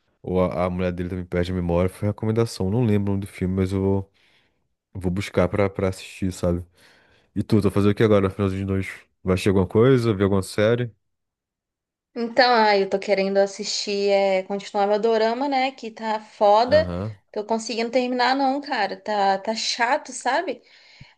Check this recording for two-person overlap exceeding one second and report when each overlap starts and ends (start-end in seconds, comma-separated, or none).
none